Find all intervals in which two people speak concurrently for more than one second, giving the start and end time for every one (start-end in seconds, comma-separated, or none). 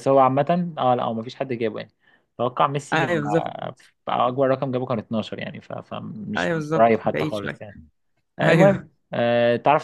6.4-7.6